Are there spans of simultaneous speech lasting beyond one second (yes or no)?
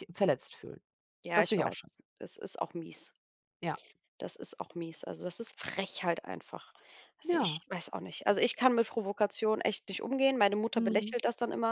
no